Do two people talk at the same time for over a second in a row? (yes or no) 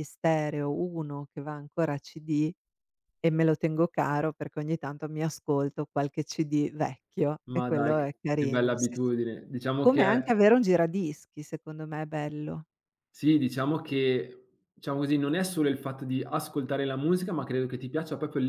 yes